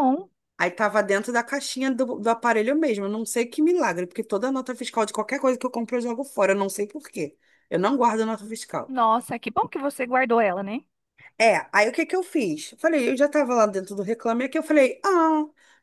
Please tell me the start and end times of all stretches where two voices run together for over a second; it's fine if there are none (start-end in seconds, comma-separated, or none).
none